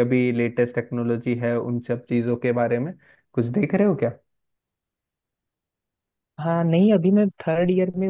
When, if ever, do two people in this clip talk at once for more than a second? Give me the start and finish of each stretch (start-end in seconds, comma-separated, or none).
none